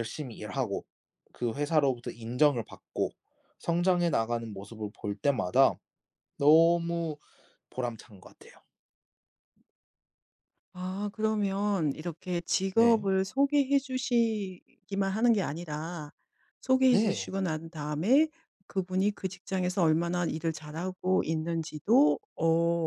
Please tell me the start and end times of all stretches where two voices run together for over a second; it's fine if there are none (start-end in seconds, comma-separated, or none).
none